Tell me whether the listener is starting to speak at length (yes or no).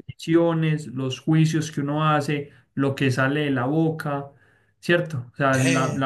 no